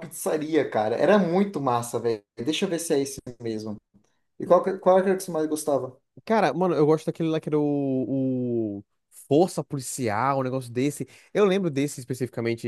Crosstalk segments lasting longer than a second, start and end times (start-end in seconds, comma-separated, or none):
none